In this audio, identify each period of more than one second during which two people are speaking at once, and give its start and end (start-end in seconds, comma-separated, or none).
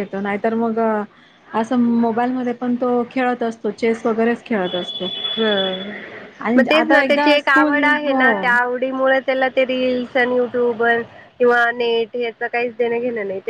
6.6-8.2